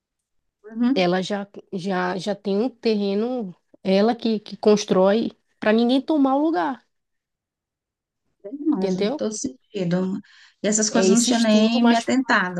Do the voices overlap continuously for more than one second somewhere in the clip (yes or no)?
yes